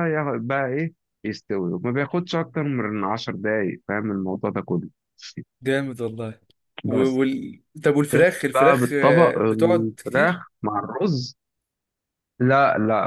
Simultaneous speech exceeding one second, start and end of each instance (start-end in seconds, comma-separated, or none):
8.1-10.4